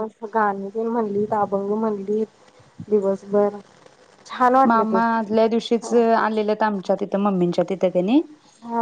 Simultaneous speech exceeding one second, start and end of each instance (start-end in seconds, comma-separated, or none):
none